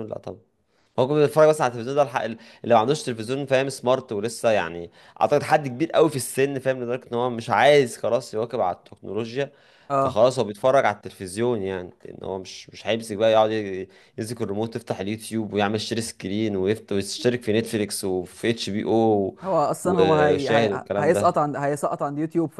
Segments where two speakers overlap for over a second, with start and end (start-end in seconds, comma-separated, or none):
19.8-21.4